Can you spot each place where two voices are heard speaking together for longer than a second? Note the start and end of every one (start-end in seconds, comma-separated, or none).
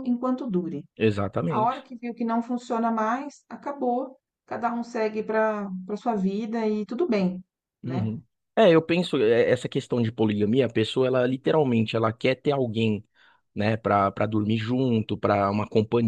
none